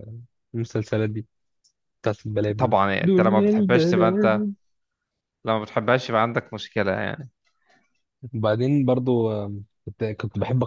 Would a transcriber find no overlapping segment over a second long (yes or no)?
no